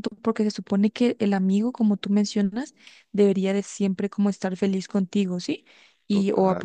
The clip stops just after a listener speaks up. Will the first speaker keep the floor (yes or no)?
yes